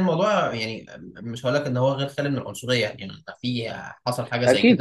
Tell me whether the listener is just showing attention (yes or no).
no